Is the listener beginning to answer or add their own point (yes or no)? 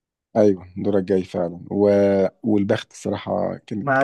yes